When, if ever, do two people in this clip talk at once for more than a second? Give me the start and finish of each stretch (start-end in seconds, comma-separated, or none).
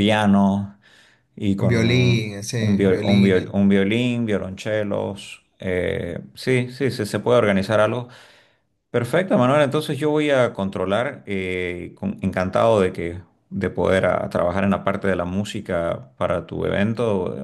1.6-3.5